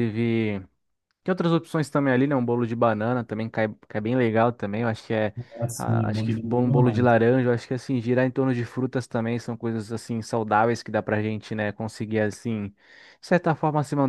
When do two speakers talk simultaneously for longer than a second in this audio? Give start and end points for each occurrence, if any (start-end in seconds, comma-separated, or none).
5.8-7.1